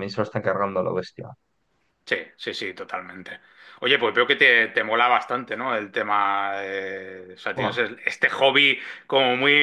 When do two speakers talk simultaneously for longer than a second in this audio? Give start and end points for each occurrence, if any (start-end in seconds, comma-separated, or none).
none